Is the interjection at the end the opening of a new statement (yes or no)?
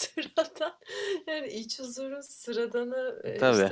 no